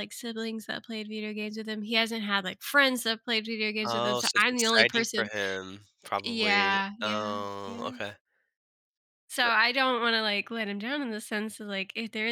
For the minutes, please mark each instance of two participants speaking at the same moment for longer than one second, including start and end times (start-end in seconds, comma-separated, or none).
3.8-5.3, 6.2-8.0